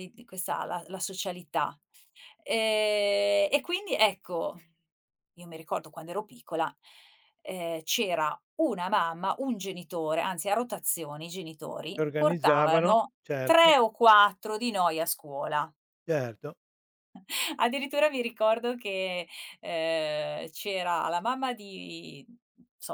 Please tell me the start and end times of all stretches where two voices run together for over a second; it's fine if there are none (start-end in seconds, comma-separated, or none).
11.9-13.7